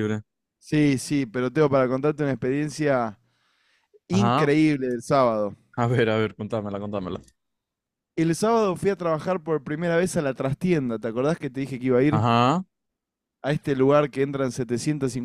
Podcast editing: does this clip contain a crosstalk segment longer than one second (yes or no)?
no